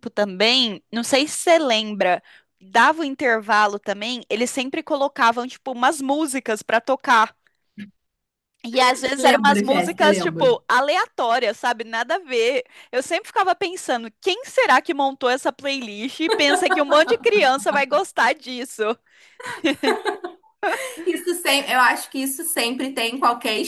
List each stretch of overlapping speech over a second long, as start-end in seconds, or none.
9.2-10.6